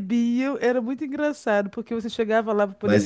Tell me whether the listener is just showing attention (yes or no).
no